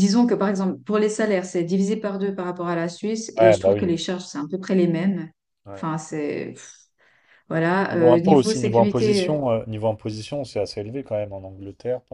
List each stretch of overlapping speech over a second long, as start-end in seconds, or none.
7.9-9.4